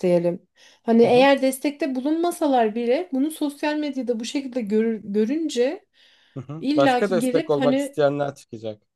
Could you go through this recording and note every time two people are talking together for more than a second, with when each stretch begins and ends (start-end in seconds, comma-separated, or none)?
6.6-8.0